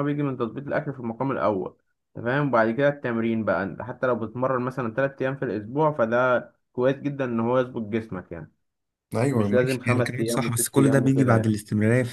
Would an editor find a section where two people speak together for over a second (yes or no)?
yes